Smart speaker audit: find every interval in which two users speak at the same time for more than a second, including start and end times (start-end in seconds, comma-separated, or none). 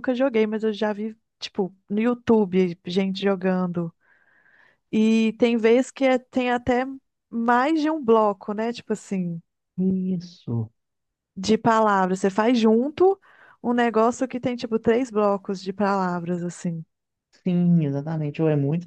none